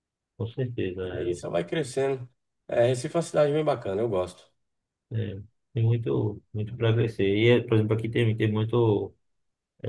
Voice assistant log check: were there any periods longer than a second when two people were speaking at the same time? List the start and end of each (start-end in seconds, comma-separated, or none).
none